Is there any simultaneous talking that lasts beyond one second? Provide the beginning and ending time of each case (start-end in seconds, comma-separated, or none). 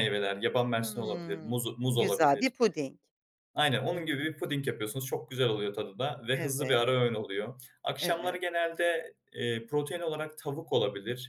0.8-2.5